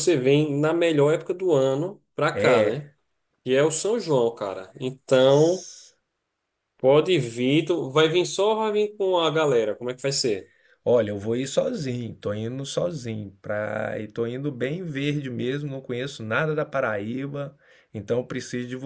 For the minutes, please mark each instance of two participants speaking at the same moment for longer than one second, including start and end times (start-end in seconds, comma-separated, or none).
none